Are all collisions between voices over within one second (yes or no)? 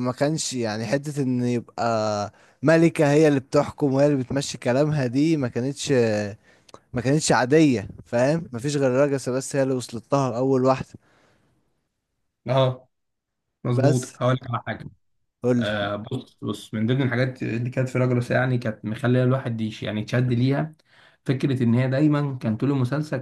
yes